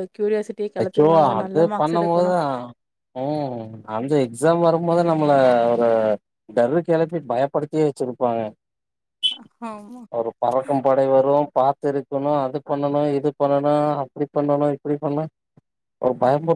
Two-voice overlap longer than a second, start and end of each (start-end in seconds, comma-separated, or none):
0.8-2.3